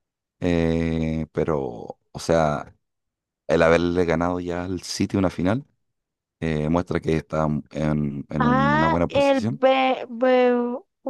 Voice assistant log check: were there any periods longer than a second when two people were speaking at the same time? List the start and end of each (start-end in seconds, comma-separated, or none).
8.4-9.6